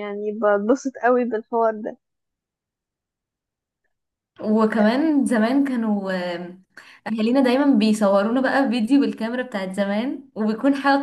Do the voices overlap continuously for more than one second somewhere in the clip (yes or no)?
no